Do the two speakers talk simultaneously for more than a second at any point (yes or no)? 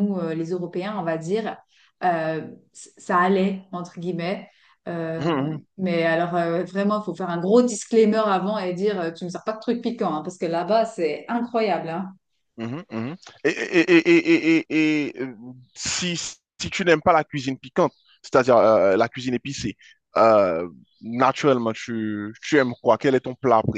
no